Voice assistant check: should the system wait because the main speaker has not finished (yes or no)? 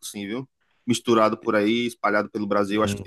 no